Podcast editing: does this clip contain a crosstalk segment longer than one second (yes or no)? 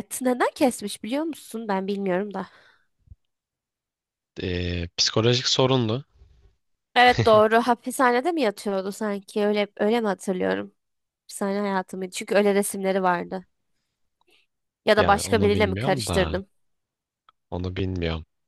yes